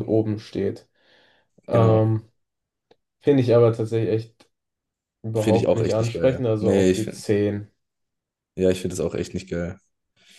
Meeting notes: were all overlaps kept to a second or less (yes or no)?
no